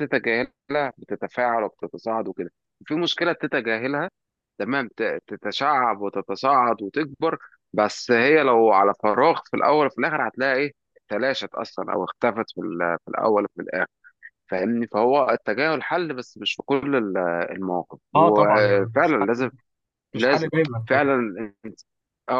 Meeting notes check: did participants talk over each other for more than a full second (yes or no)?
yes